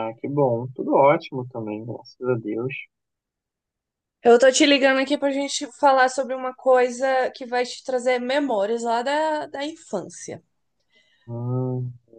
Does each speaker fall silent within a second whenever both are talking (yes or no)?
yes